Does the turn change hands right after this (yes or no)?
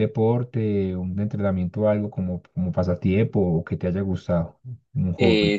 yes